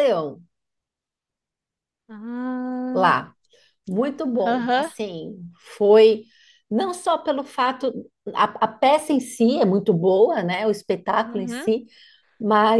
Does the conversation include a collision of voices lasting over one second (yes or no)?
no